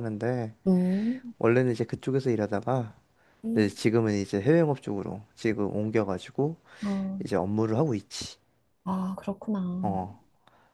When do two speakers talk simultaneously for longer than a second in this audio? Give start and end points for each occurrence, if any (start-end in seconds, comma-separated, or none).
none